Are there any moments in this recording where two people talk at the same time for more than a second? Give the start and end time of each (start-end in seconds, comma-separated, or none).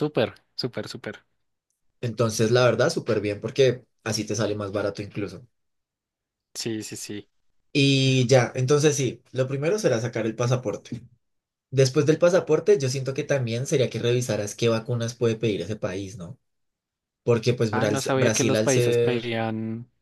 17.7-19.4